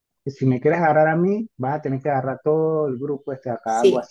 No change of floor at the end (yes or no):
no